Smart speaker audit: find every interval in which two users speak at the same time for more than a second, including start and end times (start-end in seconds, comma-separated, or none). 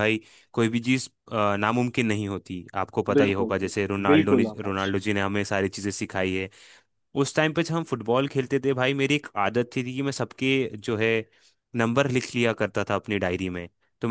3.2-4.9